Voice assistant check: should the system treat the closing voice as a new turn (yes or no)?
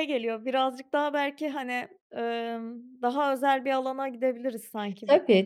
yes